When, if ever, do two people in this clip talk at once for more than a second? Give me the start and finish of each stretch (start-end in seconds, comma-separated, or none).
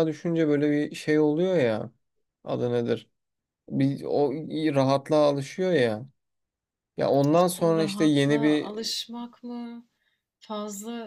7.3-8.7